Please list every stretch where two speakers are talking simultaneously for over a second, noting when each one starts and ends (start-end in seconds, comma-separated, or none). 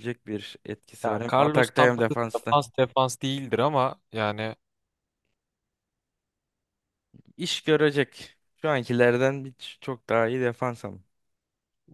1.0-2.6